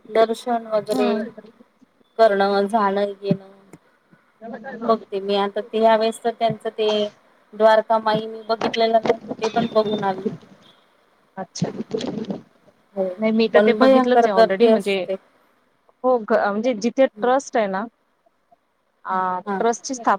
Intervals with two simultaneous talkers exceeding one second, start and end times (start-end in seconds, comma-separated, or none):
13.5-15.0